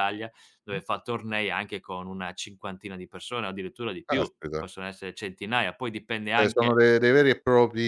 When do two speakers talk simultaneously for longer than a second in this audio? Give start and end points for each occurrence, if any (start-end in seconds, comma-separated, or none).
none